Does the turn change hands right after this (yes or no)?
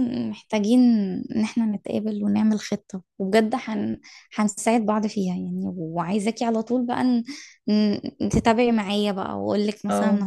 no